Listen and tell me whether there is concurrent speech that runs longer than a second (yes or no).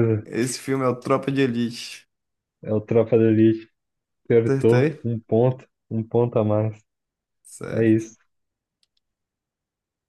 no